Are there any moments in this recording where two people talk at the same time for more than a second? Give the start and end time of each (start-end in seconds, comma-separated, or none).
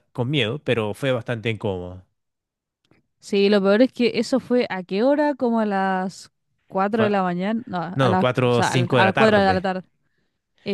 7.9-9.6